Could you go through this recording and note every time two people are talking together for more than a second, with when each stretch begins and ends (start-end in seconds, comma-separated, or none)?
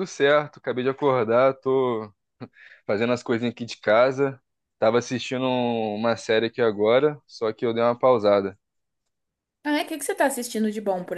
none